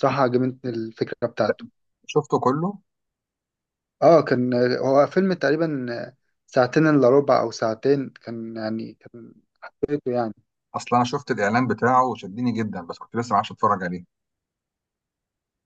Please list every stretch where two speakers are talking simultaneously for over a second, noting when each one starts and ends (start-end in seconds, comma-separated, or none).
none